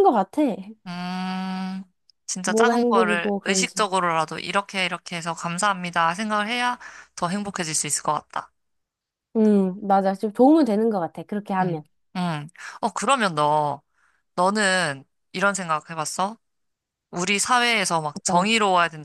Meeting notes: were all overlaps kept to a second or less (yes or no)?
no